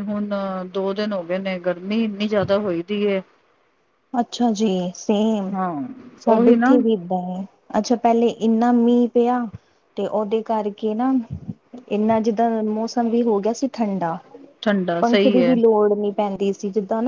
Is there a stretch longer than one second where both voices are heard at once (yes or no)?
no